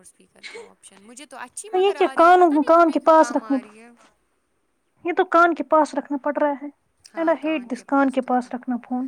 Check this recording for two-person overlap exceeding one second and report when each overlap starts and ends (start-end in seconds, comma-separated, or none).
1.8-3.6